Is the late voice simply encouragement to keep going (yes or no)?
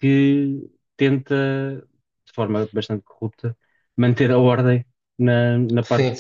no